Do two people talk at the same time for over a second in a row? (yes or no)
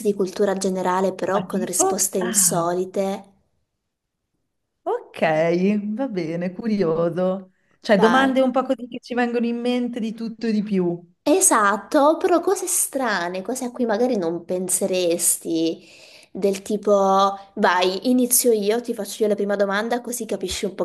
yes